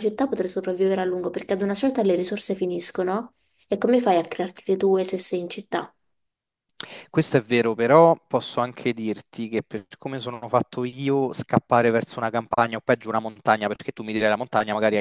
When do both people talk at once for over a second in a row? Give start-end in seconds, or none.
none